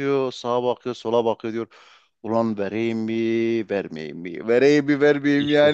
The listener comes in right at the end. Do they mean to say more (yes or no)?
no